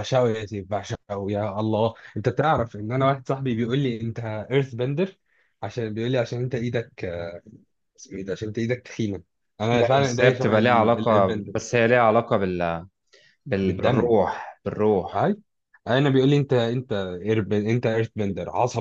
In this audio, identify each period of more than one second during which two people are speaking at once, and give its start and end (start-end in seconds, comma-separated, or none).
9.7-11.6